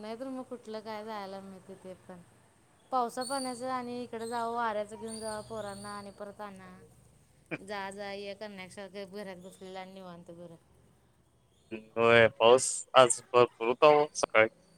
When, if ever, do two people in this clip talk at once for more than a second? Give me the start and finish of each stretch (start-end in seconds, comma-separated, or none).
none